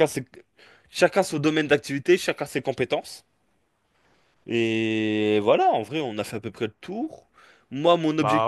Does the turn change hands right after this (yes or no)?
no